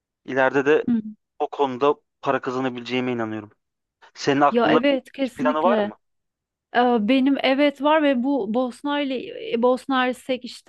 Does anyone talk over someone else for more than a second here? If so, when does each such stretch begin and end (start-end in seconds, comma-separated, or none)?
4.5-5.9